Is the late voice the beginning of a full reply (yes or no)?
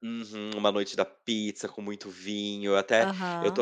no